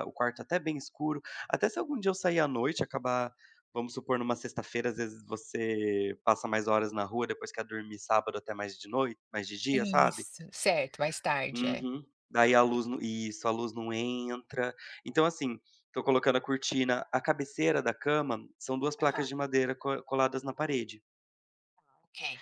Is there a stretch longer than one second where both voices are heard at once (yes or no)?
no